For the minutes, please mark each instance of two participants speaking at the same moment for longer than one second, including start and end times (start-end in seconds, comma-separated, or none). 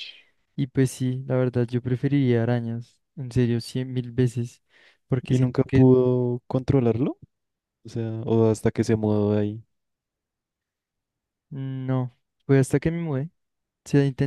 none